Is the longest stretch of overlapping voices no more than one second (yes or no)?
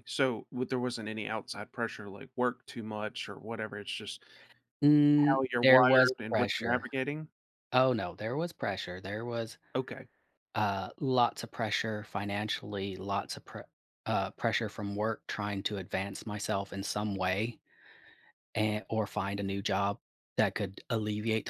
no